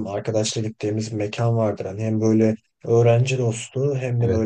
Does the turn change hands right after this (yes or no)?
no